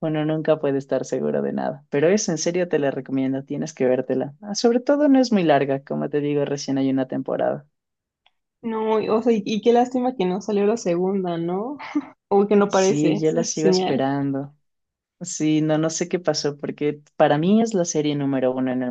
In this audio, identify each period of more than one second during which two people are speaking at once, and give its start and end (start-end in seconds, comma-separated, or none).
12.7-14.0